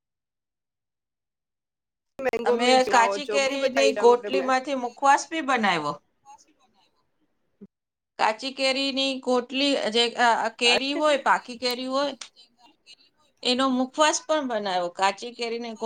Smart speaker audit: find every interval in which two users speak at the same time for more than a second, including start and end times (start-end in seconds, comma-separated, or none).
2.5-4.4